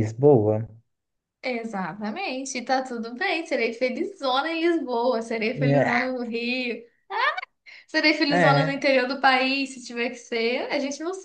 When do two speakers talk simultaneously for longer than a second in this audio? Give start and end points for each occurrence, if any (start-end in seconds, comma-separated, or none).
none